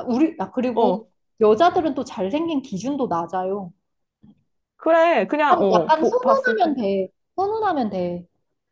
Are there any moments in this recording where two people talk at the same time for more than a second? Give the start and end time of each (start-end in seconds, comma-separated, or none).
5.5-6.8